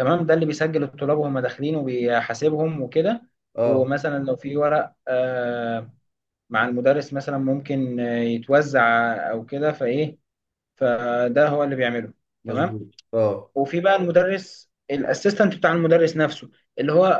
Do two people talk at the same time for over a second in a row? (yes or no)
no